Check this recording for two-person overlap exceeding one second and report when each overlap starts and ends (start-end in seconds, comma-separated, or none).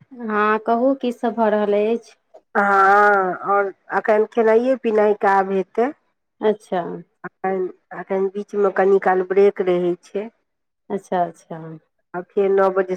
none